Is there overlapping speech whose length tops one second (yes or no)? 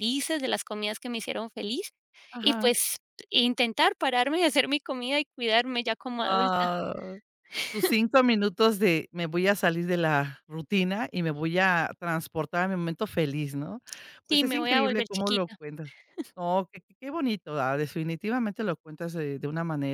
yes